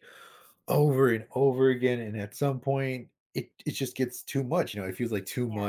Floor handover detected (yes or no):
no